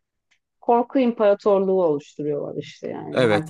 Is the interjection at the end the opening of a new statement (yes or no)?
yes